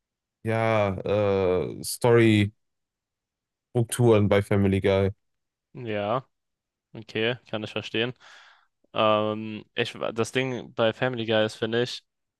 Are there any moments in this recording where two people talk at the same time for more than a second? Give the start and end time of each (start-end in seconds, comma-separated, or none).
none